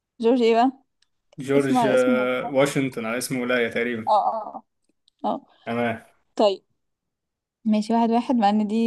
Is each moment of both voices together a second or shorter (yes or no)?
no